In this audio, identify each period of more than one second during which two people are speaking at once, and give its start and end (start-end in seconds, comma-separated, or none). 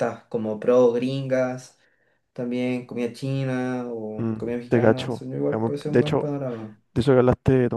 4.2-6.3